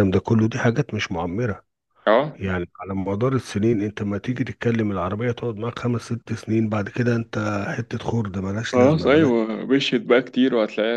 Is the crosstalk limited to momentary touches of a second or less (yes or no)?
yes